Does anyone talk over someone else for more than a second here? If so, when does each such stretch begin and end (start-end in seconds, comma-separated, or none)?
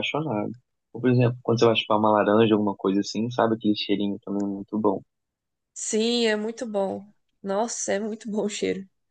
none